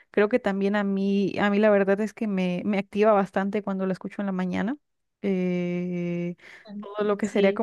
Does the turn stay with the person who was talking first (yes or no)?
yes